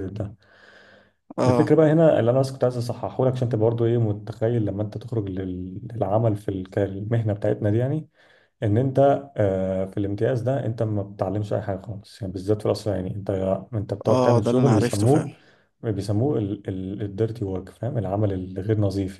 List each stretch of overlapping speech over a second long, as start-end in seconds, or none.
14.1-15.3